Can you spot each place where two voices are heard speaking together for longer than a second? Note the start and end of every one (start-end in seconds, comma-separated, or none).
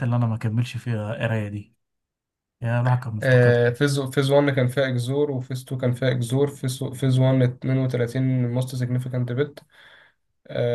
none